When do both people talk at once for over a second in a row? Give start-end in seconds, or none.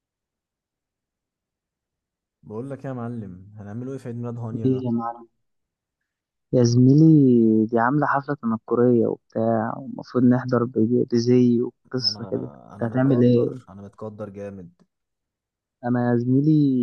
12.0-13.5